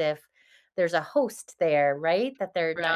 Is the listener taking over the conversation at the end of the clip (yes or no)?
yes